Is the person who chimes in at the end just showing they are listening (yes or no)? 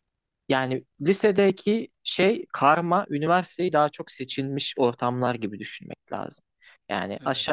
yes